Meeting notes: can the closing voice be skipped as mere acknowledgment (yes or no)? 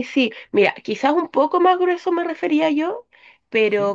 yes